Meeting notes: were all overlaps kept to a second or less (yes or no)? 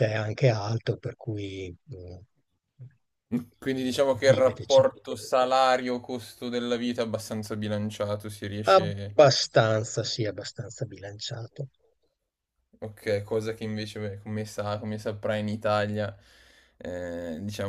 no